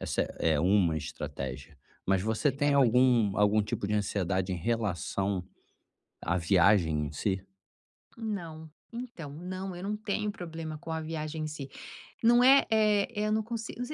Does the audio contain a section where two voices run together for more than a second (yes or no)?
no